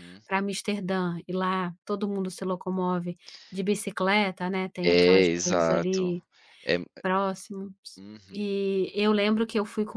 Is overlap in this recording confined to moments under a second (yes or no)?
no